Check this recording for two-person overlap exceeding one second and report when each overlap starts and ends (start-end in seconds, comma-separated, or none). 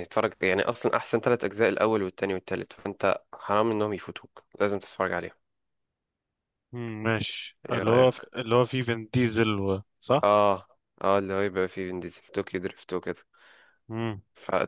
none